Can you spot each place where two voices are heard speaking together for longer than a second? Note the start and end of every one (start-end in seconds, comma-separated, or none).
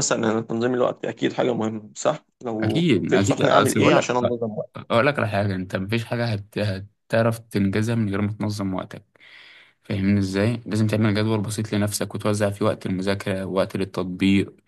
2.6-4.2